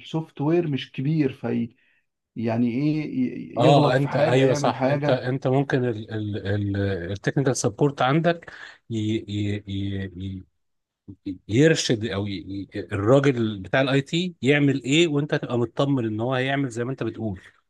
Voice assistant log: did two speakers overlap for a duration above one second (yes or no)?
yes